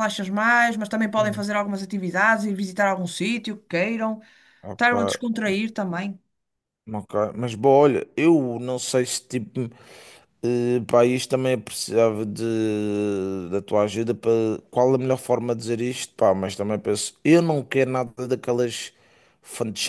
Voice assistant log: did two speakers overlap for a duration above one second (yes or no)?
no